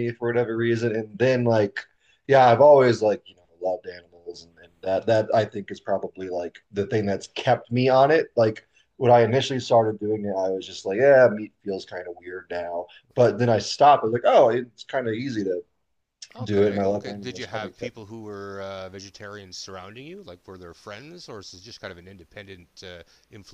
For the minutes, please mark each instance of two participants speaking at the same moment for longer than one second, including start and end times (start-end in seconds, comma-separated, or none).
16.4-18.0